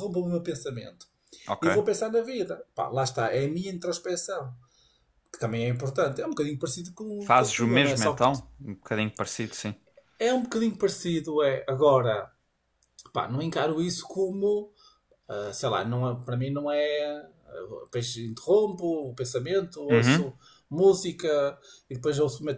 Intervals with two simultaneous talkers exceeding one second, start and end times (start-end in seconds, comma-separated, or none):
7.2-8.4